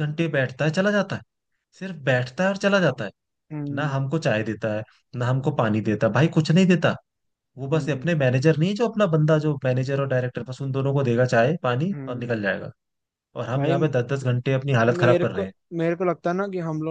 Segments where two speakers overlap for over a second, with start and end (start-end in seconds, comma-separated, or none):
none